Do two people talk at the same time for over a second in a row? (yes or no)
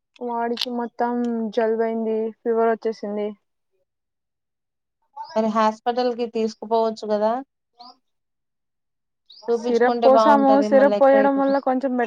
yes